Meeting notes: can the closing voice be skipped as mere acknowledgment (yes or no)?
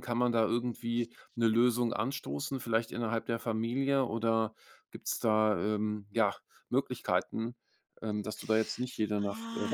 no